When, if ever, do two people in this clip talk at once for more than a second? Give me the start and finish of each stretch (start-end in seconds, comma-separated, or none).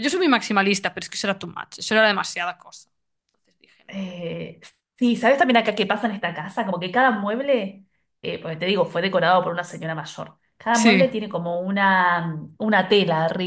none